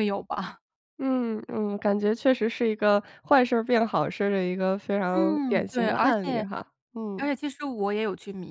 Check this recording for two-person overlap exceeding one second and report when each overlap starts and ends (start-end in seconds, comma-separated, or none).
5.1-6.5